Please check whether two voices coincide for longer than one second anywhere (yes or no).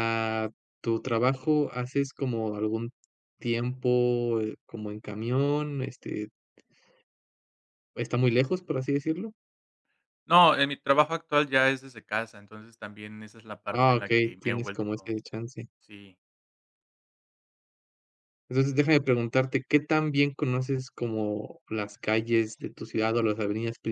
yes